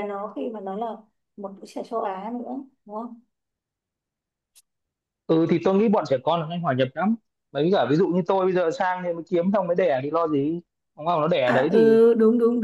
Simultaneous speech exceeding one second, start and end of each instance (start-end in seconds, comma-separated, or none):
none